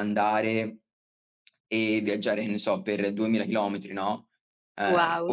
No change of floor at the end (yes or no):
yes